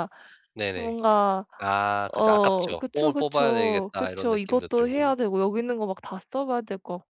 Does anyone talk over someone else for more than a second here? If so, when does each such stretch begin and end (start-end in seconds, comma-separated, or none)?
2.1-5.2